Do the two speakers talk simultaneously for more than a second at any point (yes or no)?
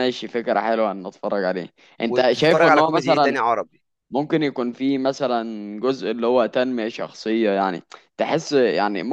yes